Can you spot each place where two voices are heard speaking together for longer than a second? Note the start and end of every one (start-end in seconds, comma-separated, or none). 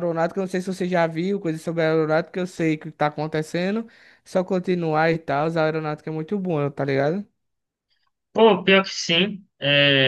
none